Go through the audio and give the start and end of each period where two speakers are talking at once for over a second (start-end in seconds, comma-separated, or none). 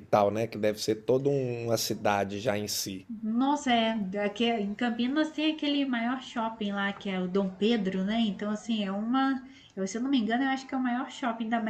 none